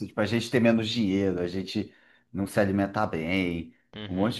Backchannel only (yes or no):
yes